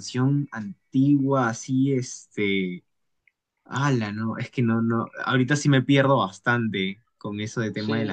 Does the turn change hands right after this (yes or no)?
yes